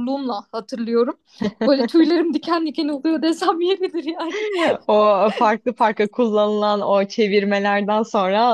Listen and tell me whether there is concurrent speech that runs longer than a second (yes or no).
no